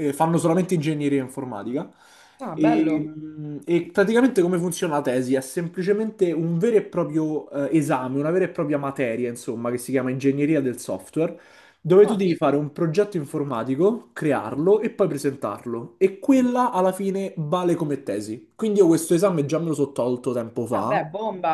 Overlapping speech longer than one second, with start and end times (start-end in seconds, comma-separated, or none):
none